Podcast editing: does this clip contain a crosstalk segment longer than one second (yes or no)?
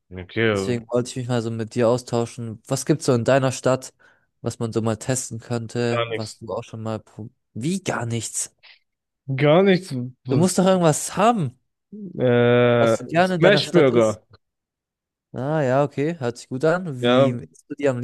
yes